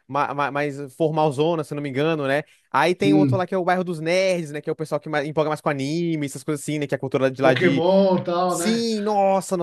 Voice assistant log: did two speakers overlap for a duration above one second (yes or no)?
no